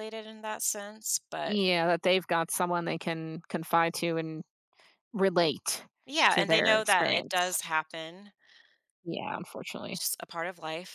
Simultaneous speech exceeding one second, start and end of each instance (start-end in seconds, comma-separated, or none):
6.3-7.6